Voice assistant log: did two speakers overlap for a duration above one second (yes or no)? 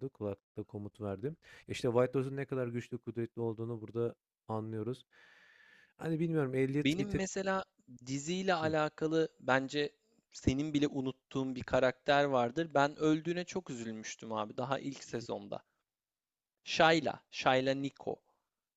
no